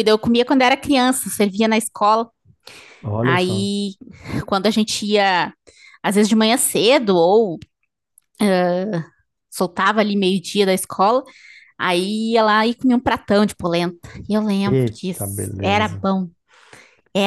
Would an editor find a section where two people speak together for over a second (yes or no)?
yes